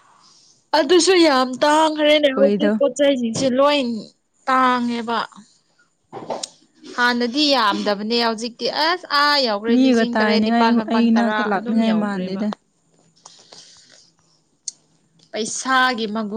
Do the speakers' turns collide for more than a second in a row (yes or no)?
yes